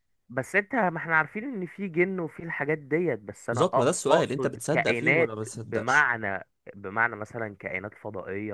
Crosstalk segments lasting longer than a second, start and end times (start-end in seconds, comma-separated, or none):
3.5-6.1